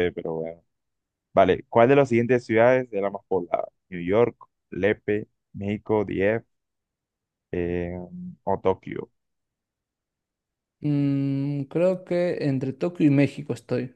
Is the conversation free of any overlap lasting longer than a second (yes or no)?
yes